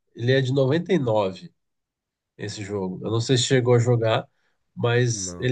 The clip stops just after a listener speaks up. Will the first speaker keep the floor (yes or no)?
yes